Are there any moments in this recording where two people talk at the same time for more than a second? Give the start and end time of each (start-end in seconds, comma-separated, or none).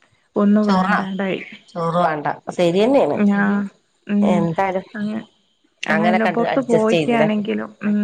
6.0-7.3